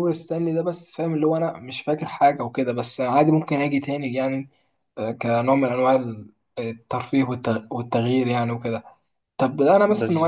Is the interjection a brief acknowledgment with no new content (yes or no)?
yes